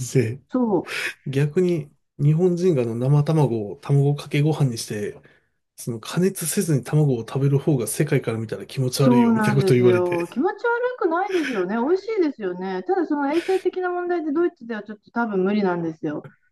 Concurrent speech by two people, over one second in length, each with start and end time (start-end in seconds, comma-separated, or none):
9.0-10.2